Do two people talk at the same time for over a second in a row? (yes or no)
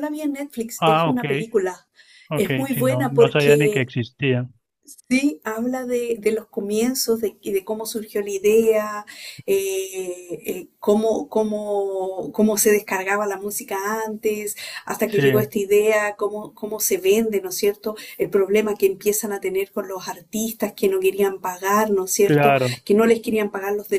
yes